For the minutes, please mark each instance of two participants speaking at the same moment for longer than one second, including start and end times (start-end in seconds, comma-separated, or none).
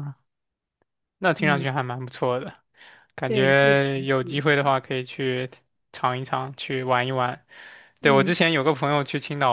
3.3-4.7